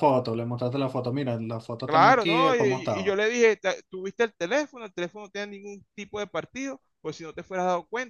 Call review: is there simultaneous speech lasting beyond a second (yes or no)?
yes